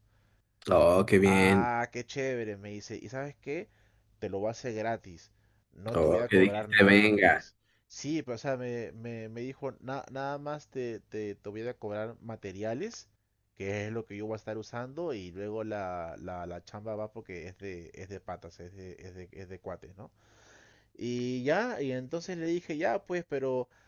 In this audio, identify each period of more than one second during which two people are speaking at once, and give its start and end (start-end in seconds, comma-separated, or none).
5.9-7.5